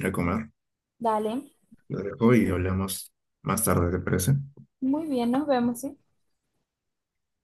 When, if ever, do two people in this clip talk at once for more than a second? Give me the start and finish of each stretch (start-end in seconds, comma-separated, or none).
none